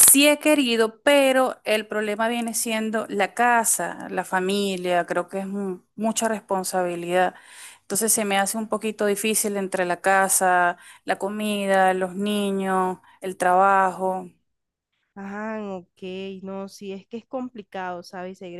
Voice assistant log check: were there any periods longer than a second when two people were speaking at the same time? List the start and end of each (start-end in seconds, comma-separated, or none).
none